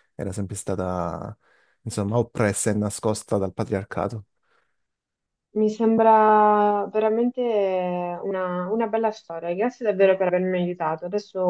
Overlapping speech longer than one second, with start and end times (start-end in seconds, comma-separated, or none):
none